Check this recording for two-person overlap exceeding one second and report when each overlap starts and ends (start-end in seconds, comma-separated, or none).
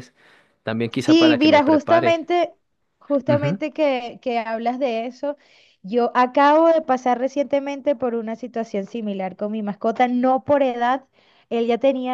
1.0-2.2